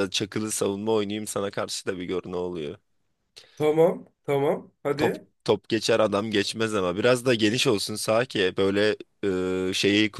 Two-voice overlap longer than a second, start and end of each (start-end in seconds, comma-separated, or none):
none